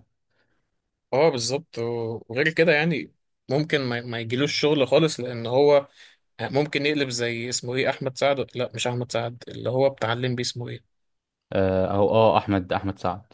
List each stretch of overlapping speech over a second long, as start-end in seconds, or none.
none